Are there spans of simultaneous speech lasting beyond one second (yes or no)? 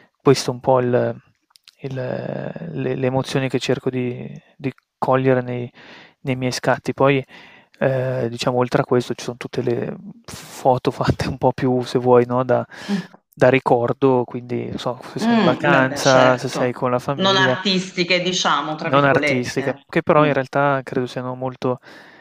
yes